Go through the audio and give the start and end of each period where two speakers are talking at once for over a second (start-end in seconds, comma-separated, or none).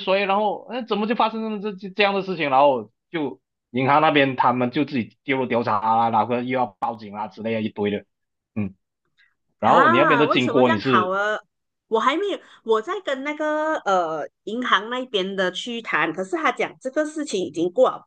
9.6-11.2